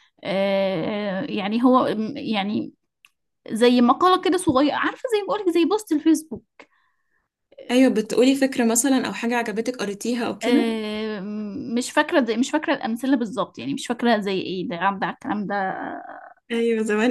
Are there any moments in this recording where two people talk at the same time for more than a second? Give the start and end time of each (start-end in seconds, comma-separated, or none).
none